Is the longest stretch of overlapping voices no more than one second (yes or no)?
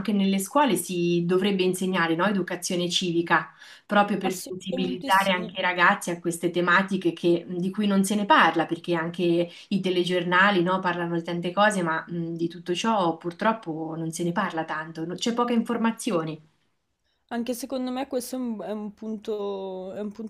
no